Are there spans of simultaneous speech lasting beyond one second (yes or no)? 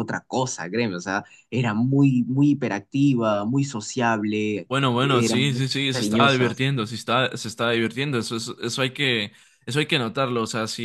yes